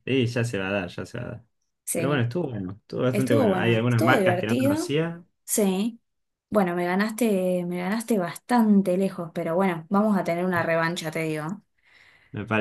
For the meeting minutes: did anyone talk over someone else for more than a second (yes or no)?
yes